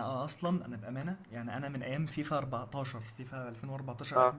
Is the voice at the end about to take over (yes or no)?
no